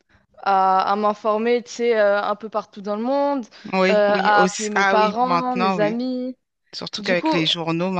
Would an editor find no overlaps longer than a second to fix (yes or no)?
no